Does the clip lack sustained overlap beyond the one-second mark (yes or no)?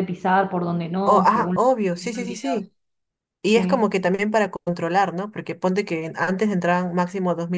no